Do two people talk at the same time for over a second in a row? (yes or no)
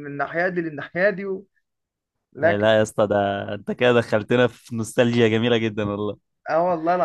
no